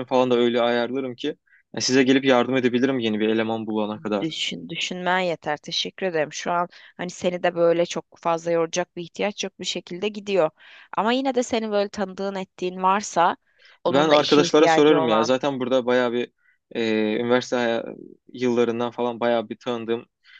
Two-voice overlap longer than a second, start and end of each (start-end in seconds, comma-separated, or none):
13.9-15.3